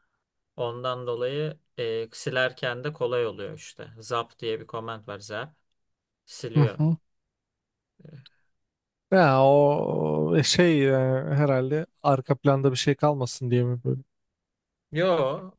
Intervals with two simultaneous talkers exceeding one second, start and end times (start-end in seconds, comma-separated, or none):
none